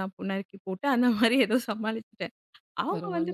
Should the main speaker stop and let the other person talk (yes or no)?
no